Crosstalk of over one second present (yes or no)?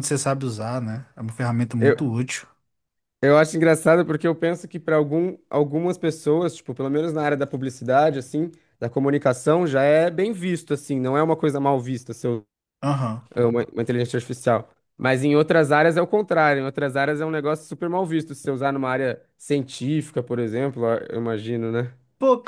no